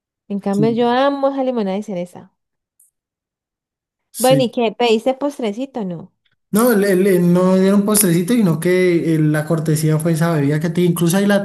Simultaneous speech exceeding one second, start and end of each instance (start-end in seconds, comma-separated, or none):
none